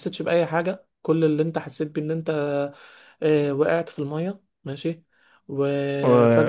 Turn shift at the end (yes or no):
no